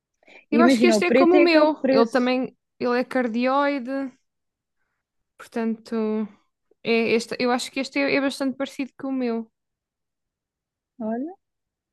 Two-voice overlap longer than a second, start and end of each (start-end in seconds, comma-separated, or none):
0.5-2.3